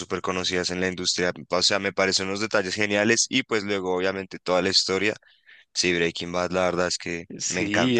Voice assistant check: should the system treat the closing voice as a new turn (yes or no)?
yes